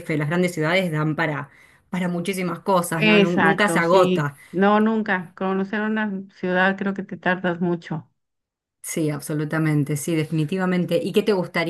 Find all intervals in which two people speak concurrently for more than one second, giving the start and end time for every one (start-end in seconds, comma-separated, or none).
3.0-4.4